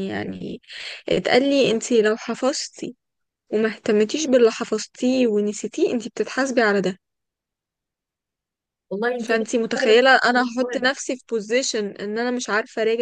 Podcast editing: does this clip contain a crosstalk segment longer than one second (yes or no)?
yes